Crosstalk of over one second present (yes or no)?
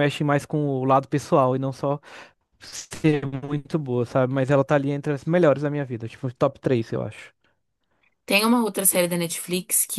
no